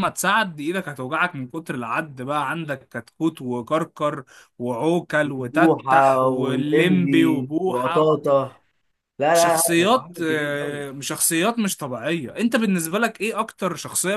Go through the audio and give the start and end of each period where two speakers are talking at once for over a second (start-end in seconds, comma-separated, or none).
5.4-8.1, 9.3-10.8